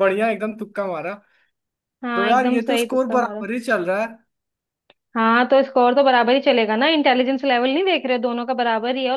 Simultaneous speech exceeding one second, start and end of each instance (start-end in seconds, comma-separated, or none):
2.1-3.4